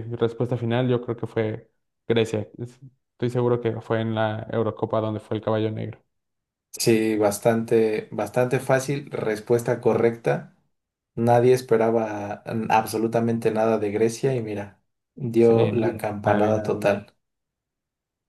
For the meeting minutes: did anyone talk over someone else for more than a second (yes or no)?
yes